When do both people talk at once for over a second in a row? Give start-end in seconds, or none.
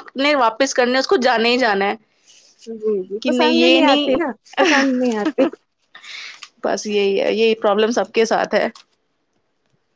none